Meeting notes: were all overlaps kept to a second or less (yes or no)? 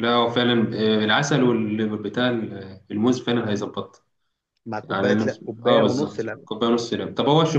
no